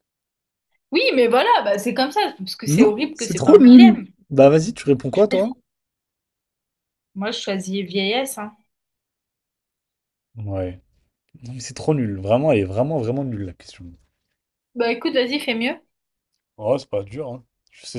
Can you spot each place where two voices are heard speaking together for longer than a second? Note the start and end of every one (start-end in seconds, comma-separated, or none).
2.7-4.1